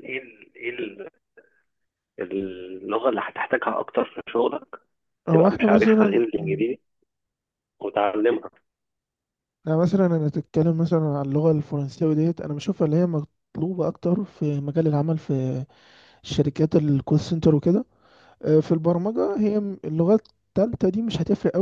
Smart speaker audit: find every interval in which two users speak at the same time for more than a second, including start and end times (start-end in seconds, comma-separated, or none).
5.3-6.6